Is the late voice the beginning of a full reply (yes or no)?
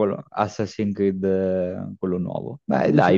yes